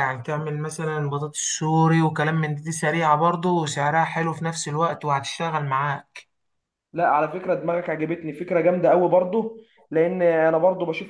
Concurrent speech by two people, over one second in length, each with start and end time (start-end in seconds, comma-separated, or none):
none